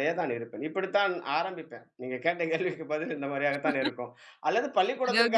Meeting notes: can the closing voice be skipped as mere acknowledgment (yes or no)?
yes